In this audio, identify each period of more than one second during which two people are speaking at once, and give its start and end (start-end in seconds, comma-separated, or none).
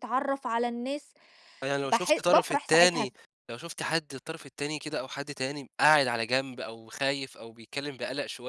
1.8-3.1